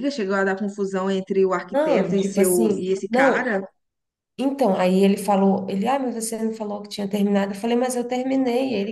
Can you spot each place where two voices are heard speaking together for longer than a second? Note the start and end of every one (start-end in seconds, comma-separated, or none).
1.7-3.5